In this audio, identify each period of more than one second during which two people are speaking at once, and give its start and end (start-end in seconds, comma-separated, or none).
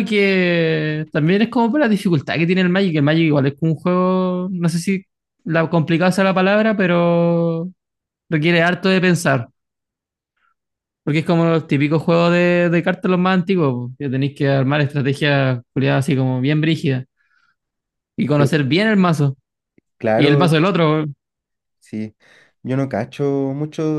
none